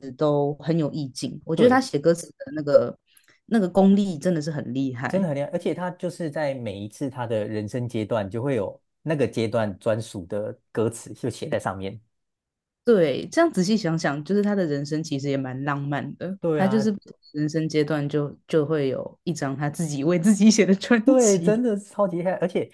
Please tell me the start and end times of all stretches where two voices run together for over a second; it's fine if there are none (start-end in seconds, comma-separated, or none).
none